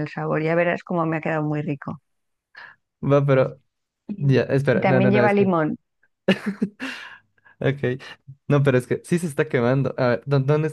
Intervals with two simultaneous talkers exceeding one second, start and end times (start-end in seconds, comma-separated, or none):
4.2-5.5